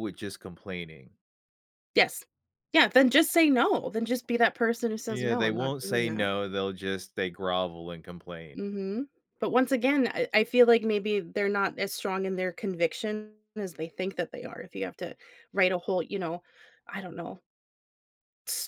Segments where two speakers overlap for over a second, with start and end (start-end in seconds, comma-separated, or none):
5.1-6.3